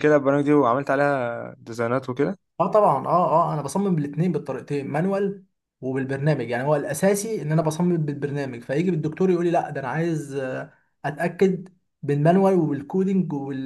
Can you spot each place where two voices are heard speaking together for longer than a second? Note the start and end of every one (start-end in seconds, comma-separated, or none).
none